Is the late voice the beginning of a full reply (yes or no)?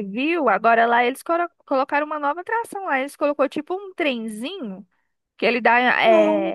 no